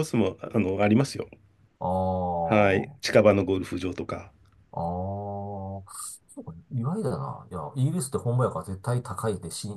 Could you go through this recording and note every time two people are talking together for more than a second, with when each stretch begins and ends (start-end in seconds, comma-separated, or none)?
none